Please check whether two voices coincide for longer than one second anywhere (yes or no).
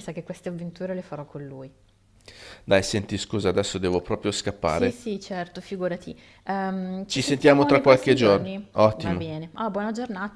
yes